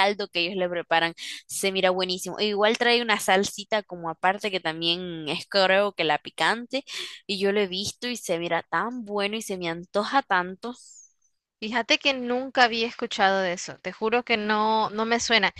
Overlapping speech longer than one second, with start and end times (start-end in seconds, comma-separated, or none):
none